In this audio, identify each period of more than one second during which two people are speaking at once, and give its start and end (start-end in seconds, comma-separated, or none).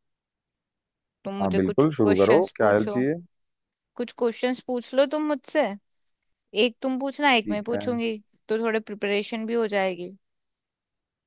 1.4-3.0